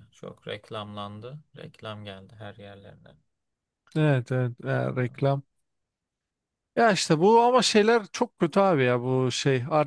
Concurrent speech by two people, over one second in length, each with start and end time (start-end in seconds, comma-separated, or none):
none